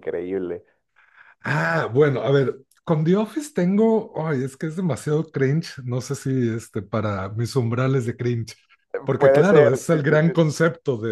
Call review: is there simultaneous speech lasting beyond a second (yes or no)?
yes